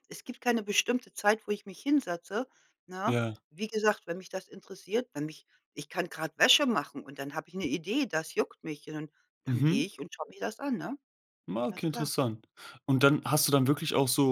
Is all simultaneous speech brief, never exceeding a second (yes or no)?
yes